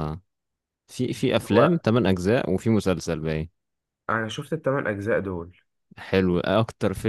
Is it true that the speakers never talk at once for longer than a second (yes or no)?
yes